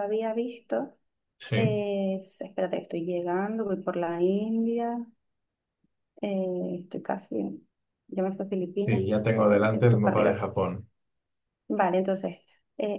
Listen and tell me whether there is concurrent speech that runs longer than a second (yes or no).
yes